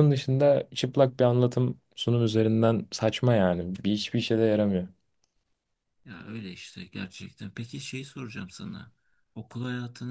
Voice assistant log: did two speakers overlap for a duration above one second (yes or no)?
no